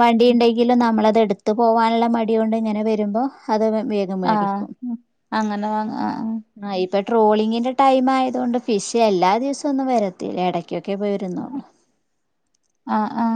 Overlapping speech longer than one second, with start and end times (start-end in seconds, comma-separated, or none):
none